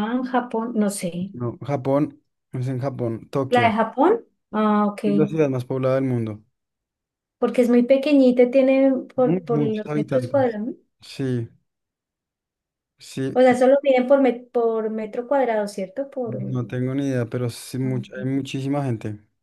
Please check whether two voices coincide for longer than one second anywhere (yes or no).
yes